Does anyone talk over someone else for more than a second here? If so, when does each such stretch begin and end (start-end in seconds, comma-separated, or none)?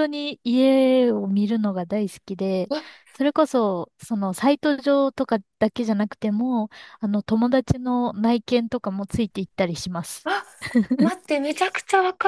none